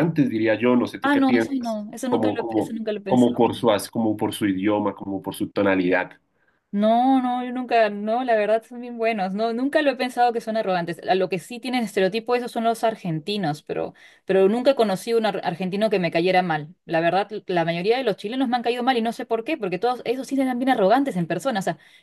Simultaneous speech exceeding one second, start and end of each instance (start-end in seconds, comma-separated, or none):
1.0-3.5